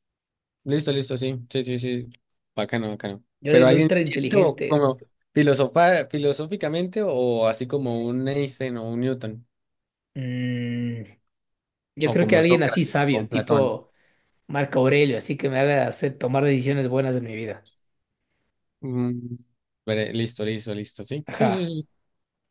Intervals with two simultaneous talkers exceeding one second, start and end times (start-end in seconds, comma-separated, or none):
3.4-4.8, 12.0-13.6